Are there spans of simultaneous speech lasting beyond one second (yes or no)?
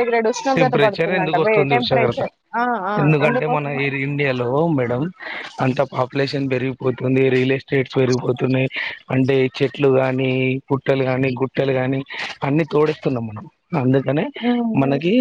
yes